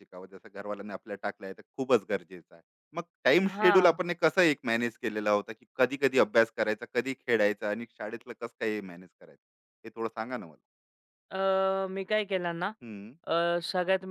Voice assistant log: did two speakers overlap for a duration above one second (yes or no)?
no